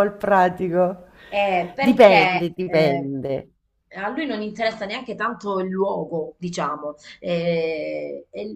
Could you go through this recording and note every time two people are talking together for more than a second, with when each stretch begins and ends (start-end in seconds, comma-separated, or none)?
1.8-3.1